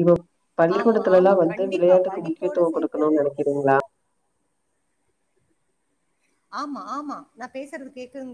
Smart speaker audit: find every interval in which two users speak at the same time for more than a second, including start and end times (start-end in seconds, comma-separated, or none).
0.8-3.0